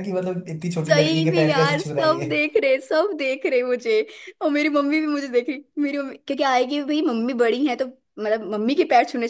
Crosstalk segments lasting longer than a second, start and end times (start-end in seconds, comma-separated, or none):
0.9-2.3